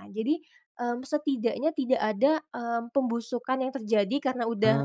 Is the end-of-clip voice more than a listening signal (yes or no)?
no